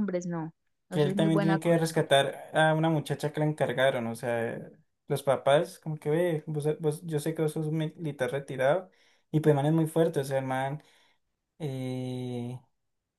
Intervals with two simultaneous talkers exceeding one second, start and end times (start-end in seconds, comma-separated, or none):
0.9-2.2